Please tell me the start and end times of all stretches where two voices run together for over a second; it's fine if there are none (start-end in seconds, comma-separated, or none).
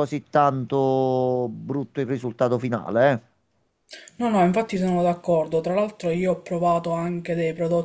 none